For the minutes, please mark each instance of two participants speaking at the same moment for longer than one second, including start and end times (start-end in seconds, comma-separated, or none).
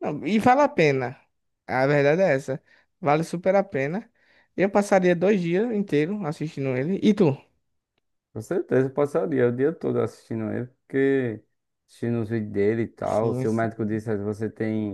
none